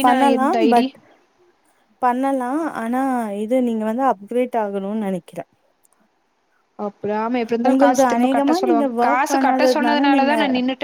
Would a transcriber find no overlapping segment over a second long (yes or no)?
no